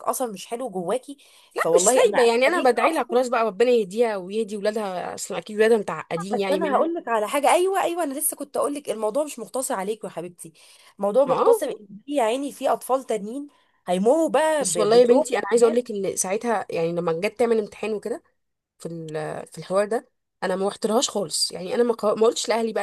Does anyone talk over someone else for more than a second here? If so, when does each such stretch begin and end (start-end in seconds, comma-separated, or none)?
1.6-3.3, 14.6-15.8